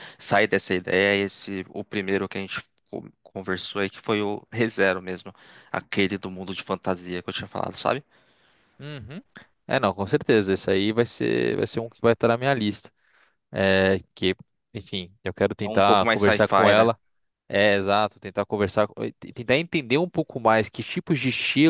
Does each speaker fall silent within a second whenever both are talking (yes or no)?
no